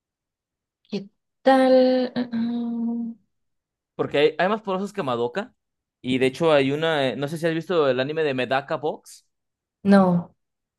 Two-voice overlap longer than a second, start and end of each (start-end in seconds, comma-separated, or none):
none